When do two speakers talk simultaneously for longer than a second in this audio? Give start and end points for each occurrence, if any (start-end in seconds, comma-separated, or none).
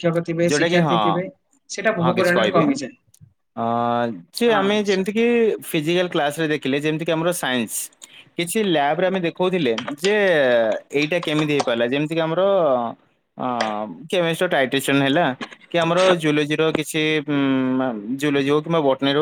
none